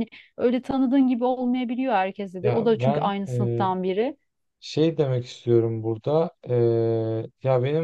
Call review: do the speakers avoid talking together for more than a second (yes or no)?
no